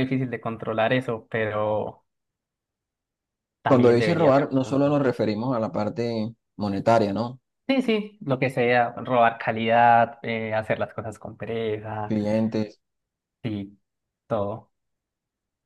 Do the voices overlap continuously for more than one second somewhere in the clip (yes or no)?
yes